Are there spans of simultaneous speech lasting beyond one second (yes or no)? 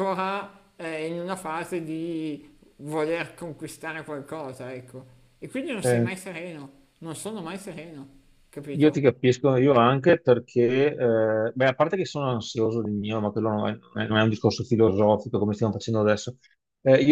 no